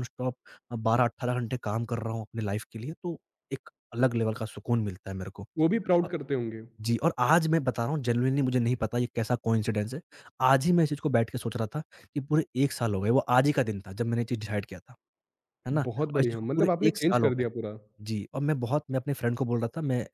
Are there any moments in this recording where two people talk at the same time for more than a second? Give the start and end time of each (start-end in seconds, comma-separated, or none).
15.8-17.4